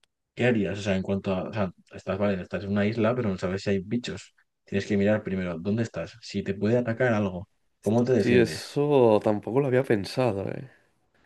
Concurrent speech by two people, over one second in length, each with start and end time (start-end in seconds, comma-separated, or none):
none